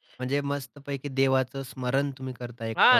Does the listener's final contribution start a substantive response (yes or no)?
yes